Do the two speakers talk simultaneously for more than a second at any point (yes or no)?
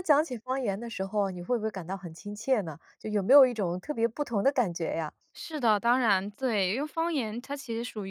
no